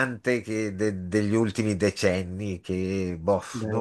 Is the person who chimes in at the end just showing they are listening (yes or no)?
yes